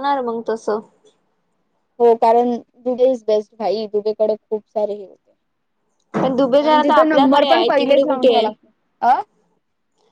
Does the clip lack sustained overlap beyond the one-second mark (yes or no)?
no